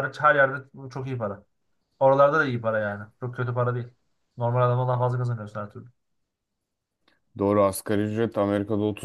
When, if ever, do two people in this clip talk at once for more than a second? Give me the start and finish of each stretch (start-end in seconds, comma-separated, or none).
none